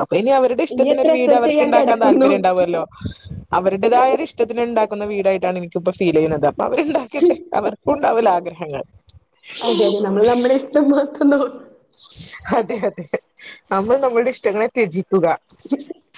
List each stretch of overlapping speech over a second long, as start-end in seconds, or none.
0.7-2.3